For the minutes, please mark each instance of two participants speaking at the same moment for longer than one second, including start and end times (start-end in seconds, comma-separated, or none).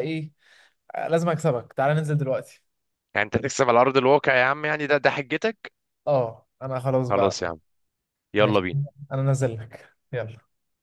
none